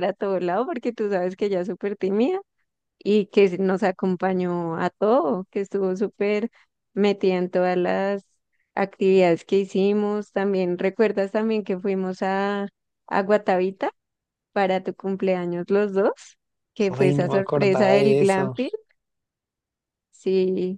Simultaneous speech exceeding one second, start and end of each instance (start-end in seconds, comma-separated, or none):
16.9-18.5